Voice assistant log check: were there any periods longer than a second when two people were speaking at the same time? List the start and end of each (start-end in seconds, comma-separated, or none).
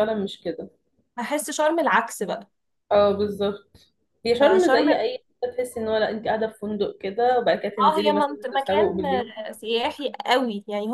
7.8-9.3